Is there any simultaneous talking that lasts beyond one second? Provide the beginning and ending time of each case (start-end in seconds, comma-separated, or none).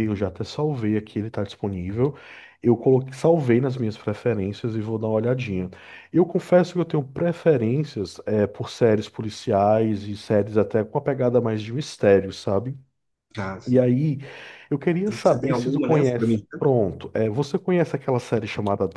15.1-16.6